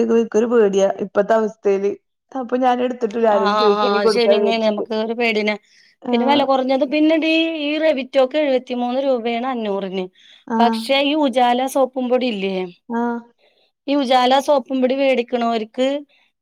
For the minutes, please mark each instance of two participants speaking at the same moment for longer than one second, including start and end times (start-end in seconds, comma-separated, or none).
none